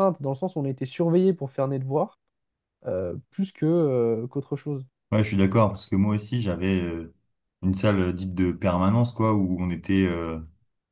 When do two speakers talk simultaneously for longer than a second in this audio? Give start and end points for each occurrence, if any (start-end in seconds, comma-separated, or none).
none